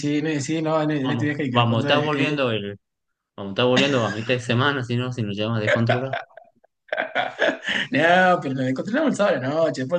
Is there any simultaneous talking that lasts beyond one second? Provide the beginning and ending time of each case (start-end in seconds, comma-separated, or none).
1.0-2.4